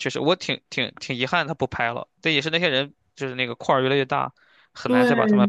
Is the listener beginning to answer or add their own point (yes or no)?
yes